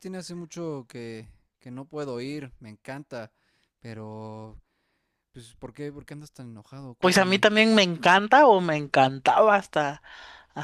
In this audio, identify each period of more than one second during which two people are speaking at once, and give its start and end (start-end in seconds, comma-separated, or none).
none